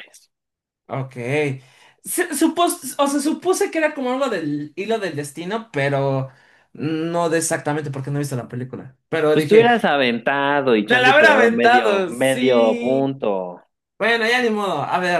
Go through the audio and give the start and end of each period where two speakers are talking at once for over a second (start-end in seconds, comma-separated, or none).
10.8-13.1